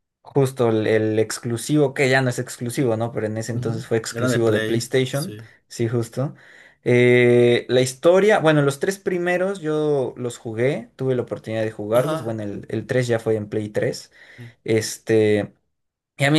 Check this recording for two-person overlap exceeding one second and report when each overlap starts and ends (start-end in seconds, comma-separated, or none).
3.5-5.5